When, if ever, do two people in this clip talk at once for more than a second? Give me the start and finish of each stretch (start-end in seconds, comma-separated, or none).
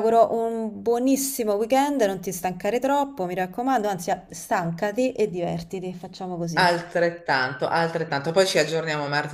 none